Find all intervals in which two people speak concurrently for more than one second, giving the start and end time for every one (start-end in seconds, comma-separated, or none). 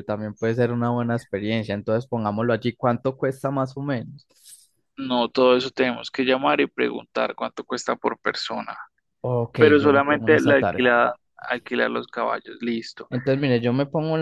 9.6-10.9